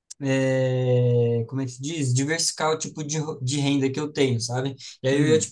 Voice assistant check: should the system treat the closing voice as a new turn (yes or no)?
no